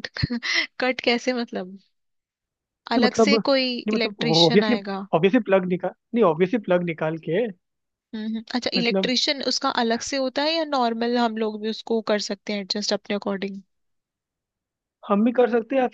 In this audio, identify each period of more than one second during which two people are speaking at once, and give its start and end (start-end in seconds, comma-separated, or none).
3.0-4.8